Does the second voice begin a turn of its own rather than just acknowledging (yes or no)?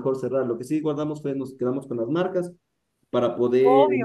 no